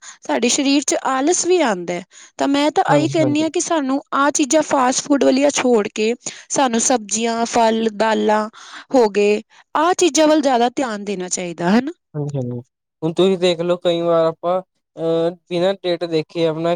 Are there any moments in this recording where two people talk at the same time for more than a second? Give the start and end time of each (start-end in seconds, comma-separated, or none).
none